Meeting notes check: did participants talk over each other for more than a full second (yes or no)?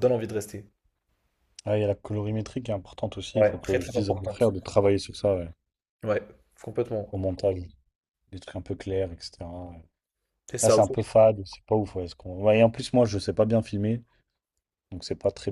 yes